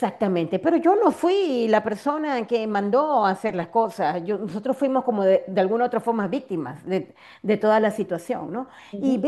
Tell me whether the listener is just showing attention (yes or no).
yes